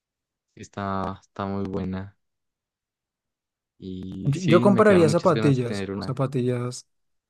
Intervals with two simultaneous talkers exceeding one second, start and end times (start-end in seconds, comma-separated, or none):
4.2-6.2